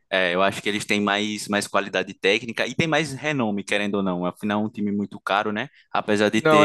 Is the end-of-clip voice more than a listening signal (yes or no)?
no